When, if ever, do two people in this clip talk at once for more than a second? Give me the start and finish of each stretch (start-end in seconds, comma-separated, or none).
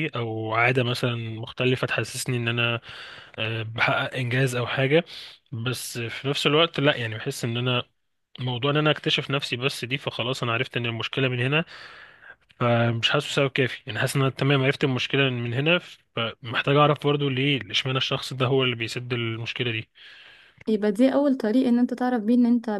none